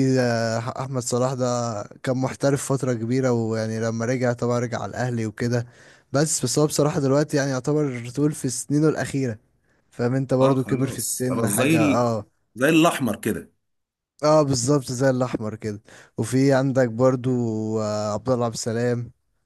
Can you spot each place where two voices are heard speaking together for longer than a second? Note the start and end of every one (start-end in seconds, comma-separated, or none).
10.4-12.1